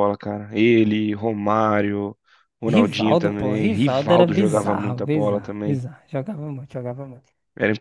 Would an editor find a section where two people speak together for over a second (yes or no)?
yes